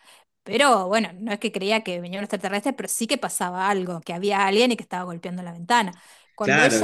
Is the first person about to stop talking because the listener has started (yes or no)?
yes